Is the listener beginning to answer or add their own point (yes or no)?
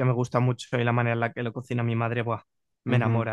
yes